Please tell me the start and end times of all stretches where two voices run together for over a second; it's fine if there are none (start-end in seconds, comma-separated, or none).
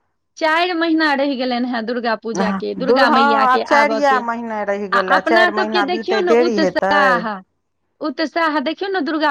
5.0-7.0